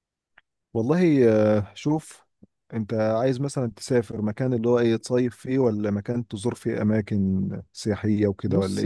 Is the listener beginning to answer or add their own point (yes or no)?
yes